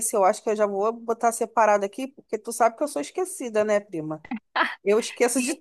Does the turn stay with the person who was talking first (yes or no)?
no